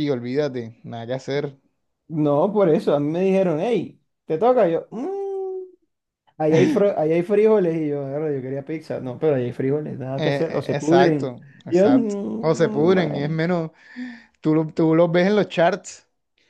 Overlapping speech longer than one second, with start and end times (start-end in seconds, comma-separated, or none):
10.2-13.4